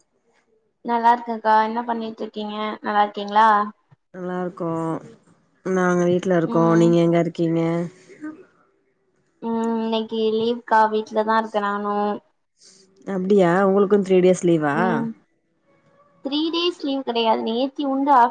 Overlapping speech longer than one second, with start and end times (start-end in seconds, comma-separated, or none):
none